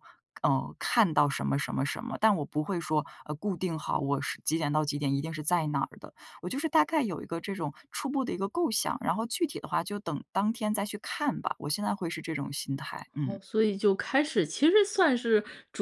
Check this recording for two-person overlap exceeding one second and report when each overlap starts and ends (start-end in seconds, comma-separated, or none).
none